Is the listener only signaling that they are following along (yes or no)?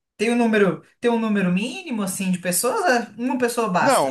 no